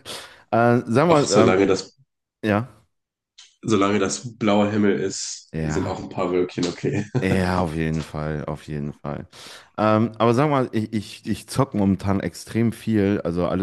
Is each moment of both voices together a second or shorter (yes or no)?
yes